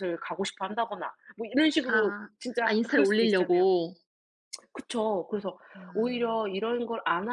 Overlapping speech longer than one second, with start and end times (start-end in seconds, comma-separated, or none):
1.9-3.7